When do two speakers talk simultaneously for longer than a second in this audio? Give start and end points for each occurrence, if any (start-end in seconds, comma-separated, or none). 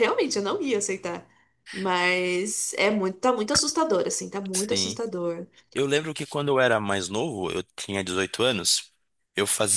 none